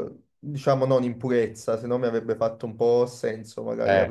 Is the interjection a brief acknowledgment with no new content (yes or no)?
yes